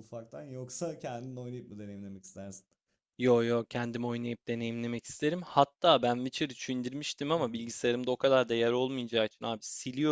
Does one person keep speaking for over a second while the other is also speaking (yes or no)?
no